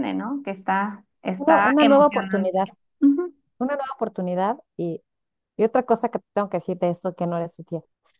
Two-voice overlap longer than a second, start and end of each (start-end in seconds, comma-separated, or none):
1.4-2.7